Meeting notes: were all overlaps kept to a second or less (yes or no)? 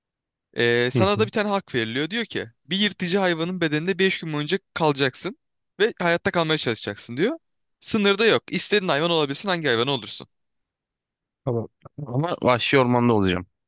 yes